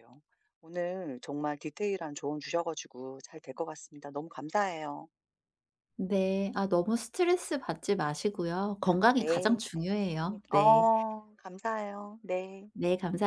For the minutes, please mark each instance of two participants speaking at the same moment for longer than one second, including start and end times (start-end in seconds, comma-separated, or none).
9.1-10.9